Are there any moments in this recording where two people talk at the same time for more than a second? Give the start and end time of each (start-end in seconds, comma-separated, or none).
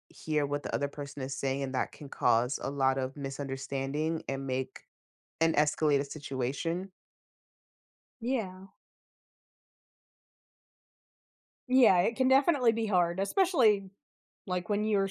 none